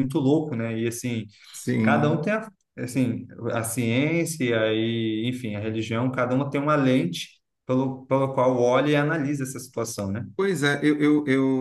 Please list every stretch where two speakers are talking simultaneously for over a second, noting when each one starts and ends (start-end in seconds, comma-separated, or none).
none